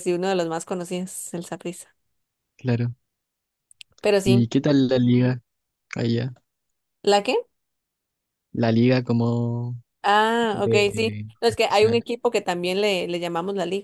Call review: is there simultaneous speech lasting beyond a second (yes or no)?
yes